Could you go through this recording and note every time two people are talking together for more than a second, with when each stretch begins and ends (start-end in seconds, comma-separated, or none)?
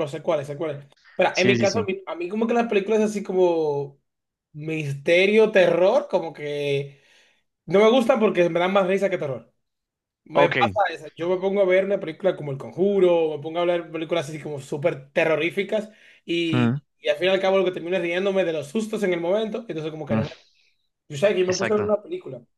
none